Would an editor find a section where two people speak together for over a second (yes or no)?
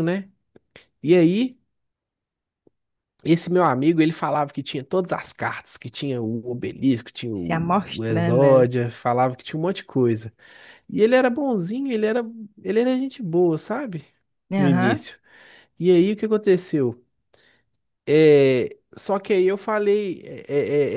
yes